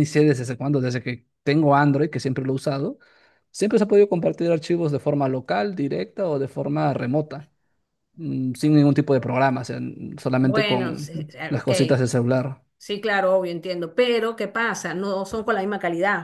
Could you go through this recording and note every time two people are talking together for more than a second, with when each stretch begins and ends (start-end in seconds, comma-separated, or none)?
10.4-11.7